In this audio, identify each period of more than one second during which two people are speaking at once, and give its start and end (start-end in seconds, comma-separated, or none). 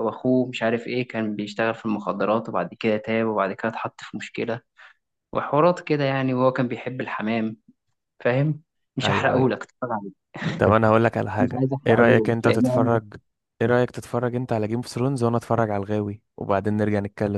11.4-13.0